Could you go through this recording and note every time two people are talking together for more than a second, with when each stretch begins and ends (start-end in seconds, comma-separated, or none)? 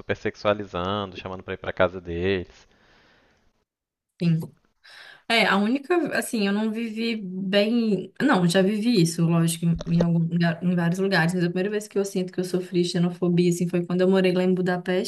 none